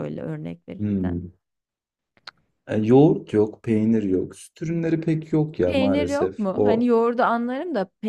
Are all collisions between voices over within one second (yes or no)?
no